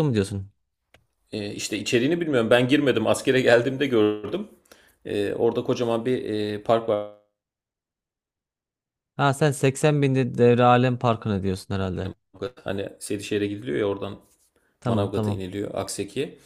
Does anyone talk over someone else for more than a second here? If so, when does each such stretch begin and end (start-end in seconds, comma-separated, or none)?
none